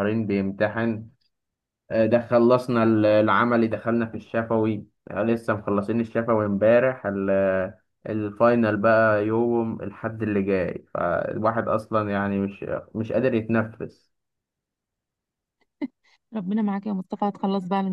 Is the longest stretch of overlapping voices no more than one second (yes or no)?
yes